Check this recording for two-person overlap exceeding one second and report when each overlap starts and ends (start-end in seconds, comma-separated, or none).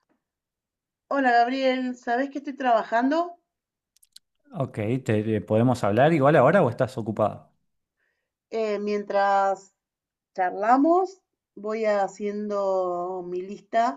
none